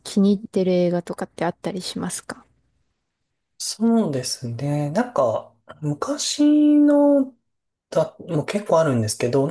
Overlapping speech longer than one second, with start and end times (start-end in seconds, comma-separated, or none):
none